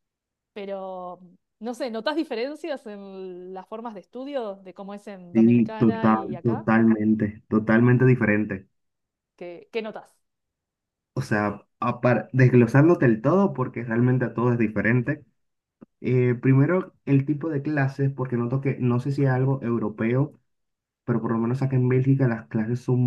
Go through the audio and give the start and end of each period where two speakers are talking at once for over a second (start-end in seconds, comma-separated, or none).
5.3-6.7